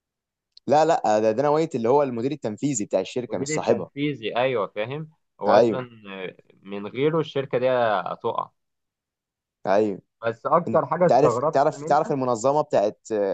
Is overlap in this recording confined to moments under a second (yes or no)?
no